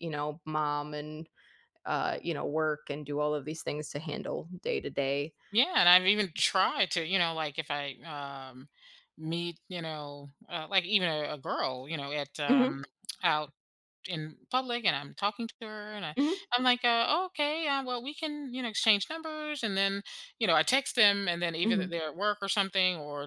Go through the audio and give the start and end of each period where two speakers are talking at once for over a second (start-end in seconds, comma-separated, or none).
none